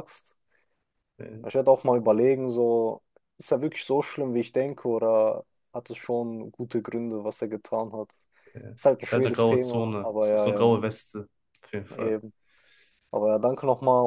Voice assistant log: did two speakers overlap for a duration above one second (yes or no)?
yes